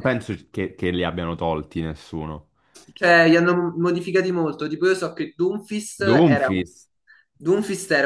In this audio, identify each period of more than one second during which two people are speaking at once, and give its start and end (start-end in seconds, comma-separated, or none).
none